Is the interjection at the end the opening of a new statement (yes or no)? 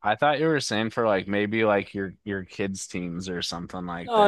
yes